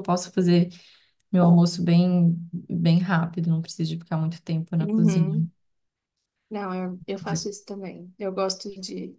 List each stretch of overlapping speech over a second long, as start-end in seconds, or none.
none